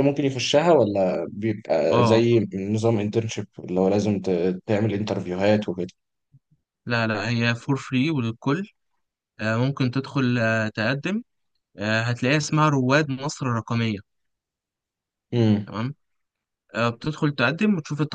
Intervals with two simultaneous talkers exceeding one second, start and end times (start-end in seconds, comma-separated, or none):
none